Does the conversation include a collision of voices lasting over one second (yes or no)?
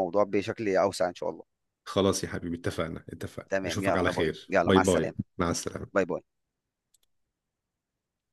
yes